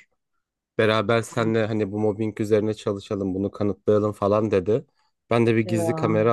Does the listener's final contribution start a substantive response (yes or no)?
no